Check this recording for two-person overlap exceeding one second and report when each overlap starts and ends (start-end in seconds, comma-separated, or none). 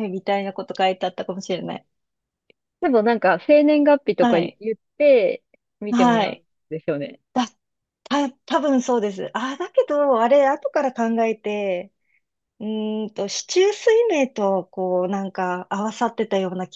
none